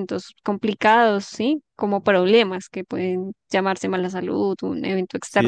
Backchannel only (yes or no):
no